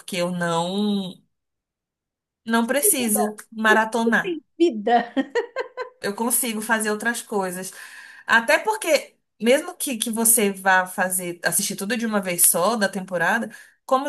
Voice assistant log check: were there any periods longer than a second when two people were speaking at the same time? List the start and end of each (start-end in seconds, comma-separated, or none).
2.6-4.4